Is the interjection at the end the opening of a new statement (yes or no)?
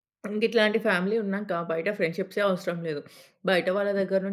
no